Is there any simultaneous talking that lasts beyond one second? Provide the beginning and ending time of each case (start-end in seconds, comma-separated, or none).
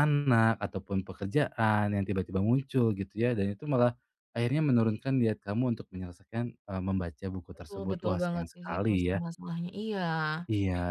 7.5-9.2